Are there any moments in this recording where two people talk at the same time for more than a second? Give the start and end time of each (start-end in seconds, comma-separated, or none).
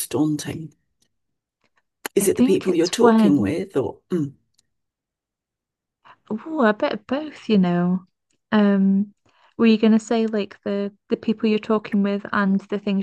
2.2-3.6